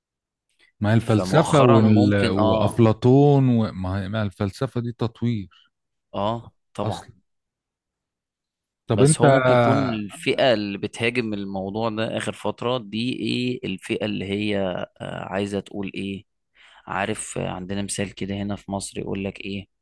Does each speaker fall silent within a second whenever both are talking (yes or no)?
no